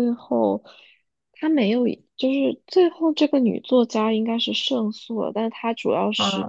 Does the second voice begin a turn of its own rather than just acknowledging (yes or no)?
no